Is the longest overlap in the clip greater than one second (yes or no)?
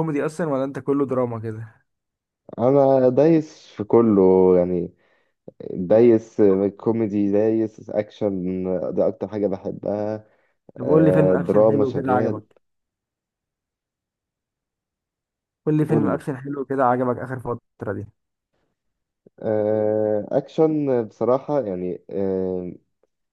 yes